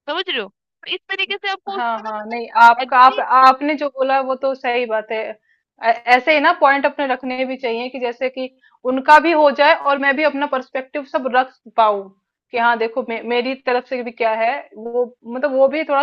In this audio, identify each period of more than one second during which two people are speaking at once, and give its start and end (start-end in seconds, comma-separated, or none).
1.7-3.5